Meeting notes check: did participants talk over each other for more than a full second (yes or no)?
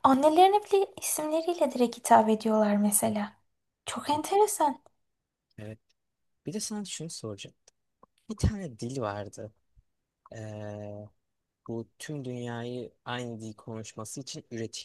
no